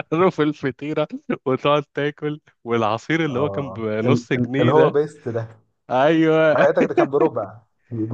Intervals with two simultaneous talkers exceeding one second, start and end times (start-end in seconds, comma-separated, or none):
3.3-5.0